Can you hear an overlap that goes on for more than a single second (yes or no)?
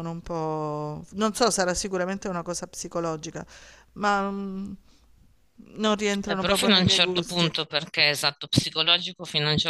yes